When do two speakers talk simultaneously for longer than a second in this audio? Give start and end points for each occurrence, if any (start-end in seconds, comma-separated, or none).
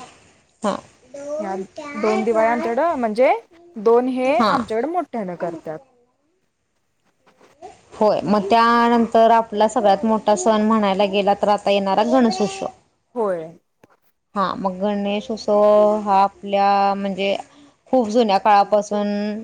none